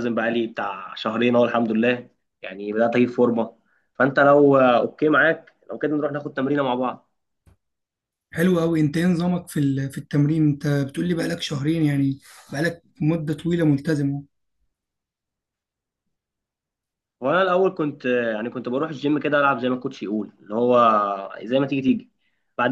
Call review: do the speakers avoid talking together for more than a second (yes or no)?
yes